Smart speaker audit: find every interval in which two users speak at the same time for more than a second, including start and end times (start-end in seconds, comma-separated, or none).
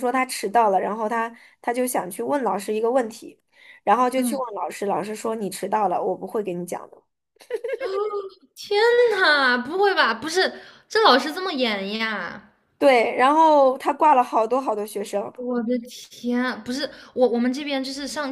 none